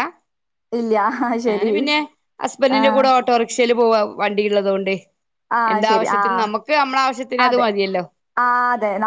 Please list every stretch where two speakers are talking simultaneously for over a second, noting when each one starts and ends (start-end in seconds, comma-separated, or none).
none